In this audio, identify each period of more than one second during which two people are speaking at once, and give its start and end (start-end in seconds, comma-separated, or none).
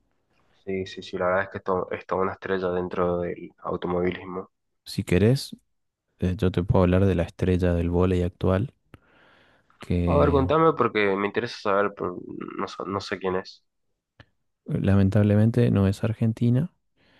none